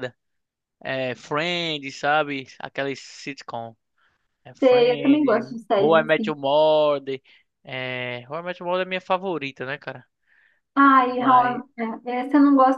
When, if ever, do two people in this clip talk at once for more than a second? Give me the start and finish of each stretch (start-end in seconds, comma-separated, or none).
4.6-6.3